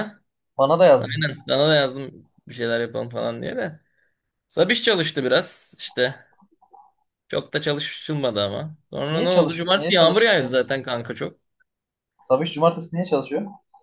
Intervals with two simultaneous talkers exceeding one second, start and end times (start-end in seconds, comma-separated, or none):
9.1-10.6